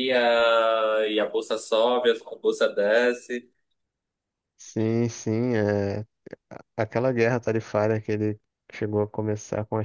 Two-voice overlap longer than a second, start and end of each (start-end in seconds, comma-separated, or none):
none